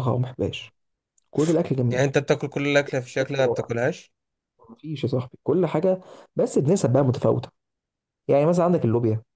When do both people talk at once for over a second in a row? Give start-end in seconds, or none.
none